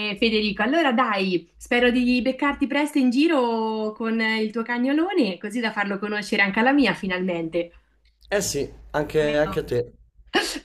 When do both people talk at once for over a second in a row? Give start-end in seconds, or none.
none